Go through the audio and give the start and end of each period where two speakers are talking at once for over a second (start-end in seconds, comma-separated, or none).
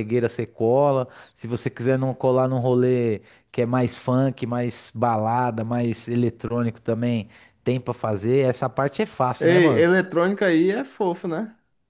none